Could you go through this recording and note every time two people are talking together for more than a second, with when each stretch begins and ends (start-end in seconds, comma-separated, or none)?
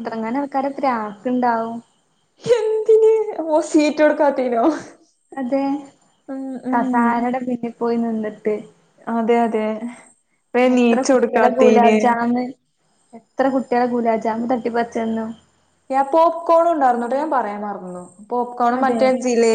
10.6-12.0